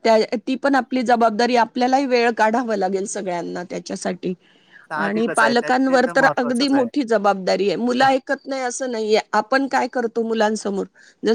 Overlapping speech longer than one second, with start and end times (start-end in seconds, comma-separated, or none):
5.0-6.9